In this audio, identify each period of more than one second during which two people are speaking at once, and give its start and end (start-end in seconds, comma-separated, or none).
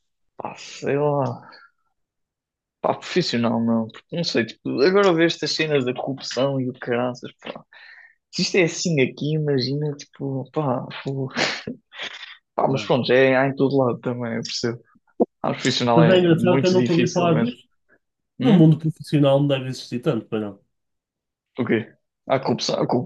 15.9-17.6